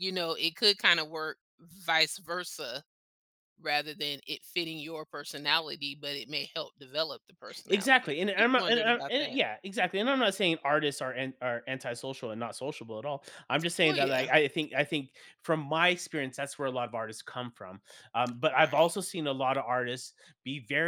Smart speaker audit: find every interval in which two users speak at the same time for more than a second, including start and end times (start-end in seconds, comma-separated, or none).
7.7-9.4